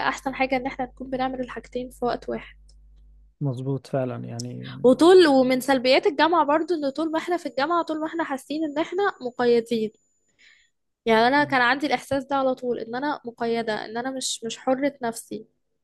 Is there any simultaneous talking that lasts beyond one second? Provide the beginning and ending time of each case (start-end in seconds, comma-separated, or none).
none